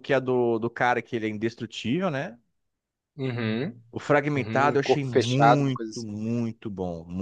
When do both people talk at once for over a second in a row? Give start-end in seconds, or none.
4.3-6.2